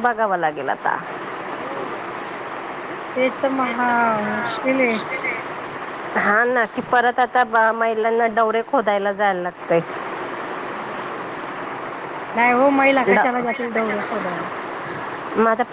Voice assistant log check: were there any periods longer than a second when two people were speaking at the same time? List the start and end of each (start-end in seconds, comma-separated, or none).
13.1-14.5